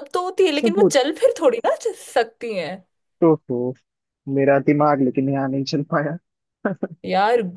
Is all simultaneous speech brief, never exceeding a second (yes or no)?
yes